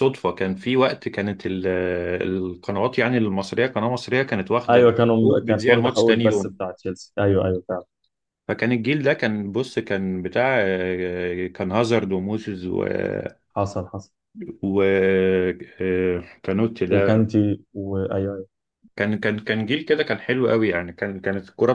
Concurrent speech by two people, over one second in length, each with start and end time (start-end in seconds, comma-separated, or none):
4.7-6.6